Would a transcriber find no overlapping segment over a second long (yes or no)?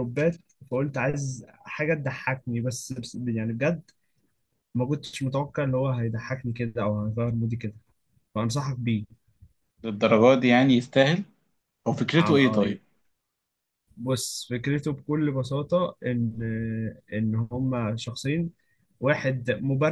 yes